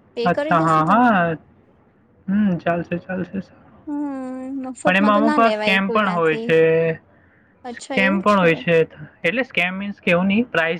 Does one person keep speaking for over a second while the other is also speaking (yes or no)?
yes